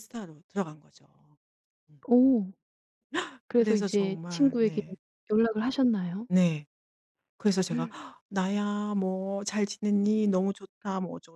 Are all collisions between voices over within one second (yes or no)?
no